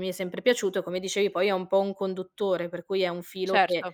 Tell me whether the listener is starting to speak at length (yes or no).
no